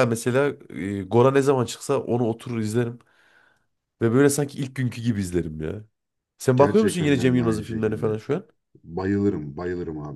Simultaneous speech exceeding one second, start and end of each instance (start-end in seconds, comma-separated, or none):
6.6-8.2